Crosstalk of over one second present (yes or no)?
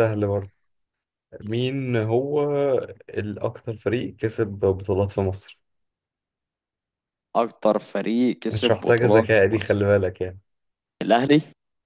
yes